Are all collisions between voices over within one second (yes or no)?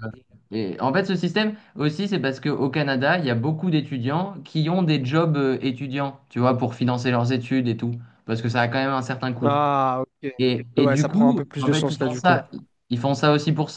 no